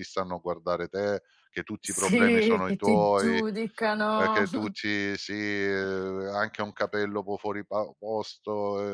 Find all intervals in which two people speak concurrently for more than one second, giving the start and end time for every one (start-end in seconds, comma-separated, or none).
1.8-3.4